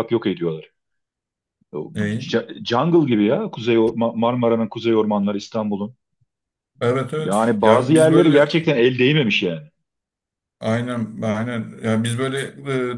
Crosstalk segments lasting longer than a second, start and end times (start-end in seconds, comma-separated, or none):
7.2-8.4